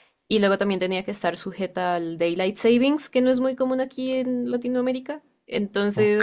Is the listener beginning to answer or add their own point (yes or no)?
yes